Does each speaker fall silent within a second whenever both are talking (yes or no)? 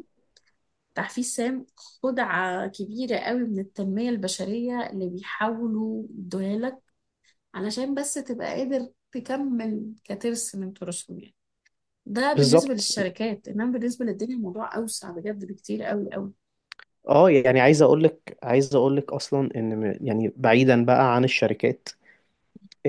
yes